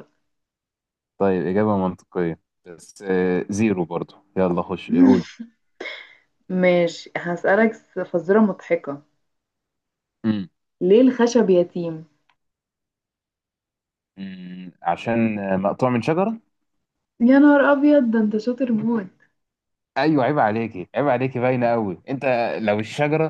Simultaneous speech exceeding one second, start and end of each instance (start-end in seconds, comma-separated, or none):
none